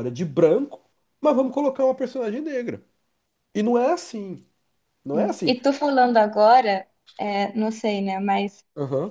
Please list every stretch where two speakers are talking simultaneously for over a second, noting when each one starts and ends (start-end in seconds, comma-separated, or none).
none